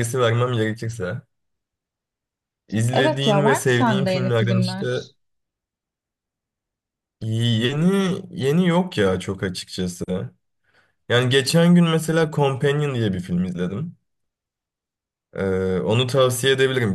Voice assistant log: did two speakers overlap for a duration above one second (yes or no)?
yes